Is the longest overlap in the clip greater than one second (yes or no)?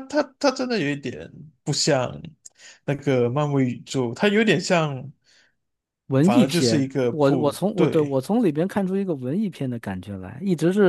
yes